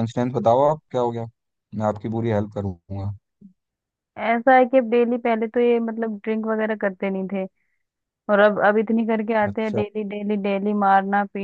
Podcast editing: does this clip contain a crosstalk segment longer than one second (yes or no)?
no